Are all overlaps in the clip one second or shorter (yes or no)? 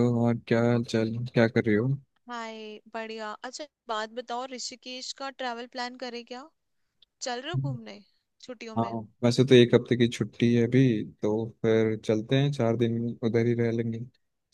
yes